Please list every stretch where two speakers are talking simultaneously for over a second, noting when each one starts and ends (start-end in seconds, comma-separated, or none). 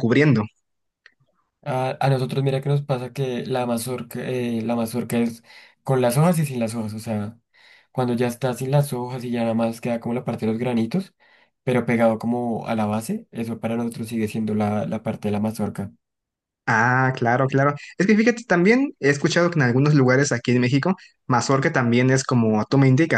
none